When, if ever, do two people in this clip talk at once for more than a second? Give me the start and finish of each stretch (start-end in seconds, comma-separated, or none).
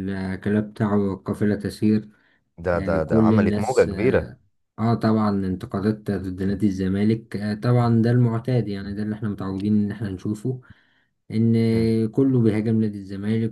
2.7-4.3